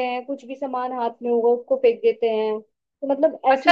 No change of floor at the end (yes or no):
no